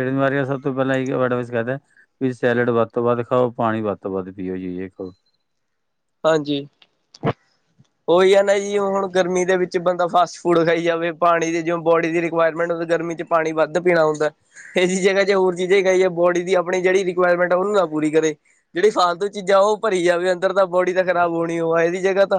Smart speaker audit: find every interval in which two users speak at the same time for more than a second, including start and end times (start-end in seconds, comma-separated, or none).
none